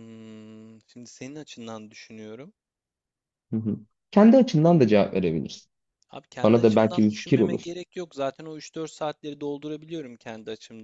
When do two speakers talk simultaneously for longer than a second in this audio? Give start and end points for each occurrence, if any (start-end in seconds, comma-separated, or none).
6.4-7.7